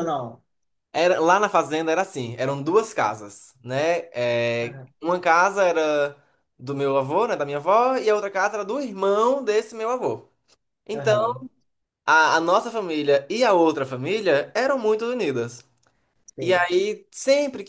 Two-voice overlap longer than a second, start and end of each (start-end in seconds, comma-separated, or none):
none